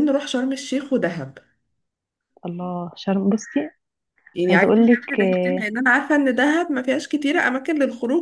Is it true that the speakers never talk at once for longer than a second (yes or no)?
no